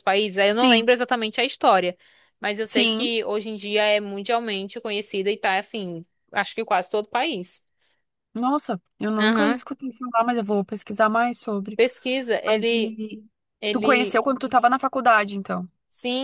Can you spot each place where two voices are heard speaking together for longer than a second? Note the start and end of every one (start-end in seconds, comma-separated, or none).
none